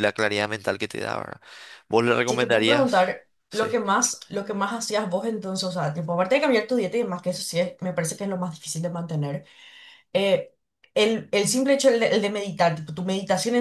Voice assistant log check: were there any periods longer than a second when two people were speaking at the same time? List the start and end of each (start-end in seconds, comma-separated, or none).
2.2-3.7